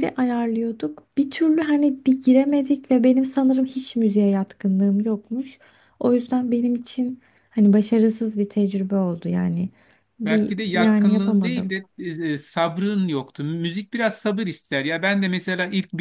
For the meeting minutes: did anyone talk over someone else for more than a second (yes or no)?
yes